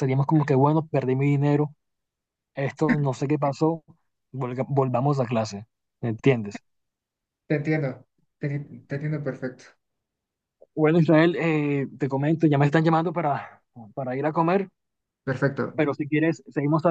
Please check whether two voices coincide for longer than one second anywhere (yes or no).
no